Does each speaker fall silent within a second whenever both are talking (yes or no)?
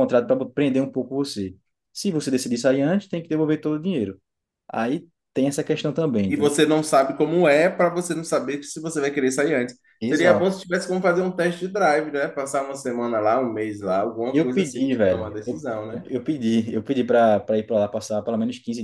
no